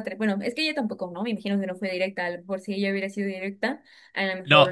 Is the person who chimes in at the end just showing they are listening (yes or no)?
no